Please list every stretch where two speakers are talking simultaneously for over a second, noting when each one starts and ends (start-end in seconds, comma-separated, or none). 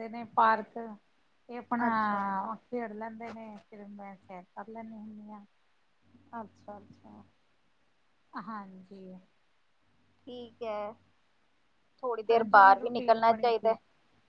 12.3-13.7